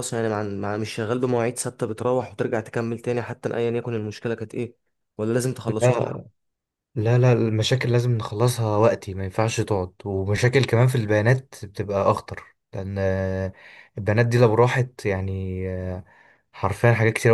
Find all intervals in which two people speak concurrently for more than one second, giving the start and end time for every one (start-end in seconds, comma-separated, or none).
none